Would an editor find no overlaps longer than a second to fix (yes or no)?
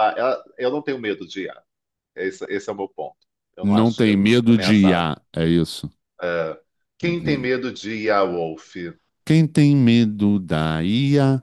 no